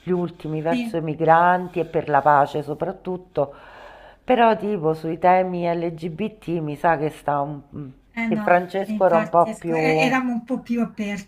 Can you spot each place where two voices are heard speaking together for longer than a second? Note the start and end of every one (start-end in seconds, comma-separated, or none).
8.2-9.8